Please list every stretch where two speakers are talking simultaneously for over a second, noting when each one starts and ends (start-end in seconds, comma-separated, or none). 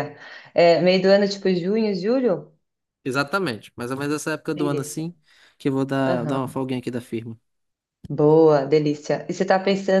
none